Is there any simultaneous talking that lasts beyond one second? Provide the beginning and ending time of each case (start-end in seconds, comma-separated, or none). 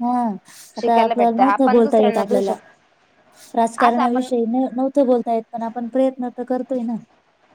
0.8-2.5